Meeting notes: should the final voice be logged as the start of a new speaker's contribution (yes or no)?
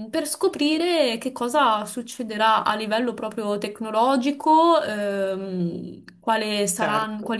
no